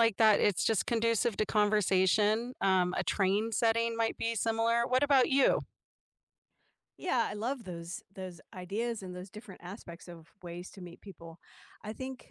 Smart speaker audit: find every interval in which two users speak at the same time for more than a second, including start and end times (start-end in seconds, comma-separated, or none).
none